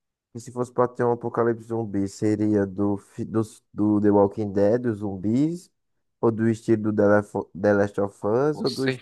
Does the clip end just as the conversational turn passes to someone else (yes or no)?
no